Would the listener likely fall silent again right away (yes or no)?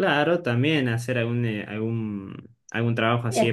yes